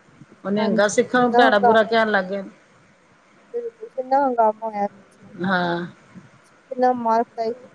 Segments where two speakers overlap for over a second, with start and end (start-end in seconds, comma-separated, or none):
0.6-2.3